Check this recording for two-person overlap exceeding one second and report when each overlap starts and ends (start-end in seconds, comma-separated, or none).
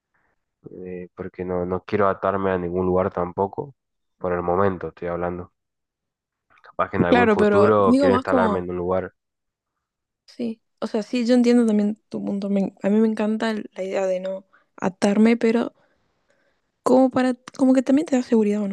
7.1-8.7